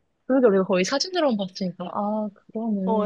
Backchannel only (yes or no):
no